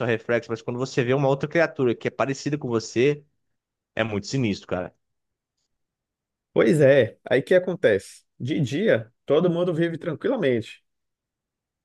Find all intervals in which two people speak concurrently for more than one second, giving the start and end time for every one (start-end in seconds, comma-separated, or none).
none